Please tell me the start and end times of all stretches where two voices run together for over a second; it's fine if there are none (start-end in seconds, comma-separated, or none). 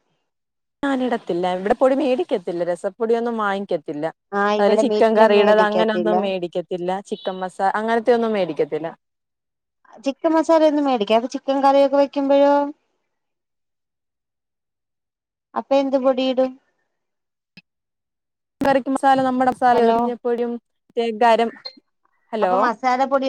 4.6-6.2